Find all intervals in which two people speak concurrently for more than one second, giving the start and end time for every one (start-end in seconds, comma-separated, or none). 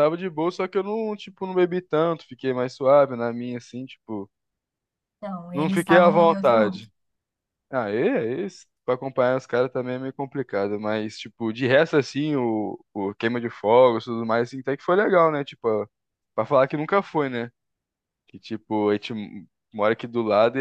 5.5-6.8